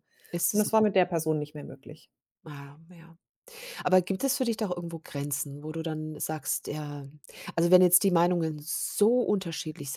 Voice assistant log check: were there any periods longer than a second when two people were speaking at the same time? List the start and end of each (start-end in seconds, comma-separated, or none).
none